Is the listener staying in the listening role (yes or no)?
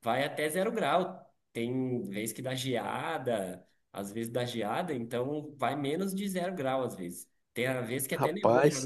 yes